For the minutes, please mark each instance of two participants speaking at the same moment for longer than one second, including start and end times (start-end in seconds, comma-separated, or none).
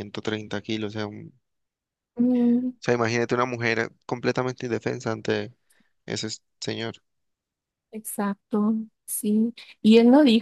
none